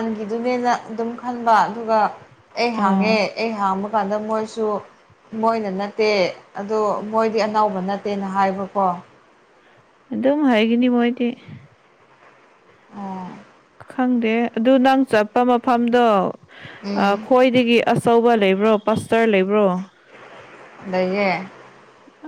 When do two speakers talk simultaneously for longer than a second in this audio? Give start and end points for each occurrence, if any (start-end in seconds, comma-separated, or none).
none